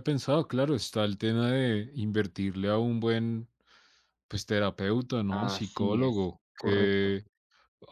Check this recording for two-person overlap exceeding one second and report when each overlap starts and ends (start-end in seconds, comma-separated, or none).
5.3-7.2